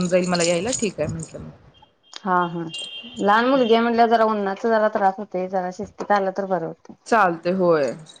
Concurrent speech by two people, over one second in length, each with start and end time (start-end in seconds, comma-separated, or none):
none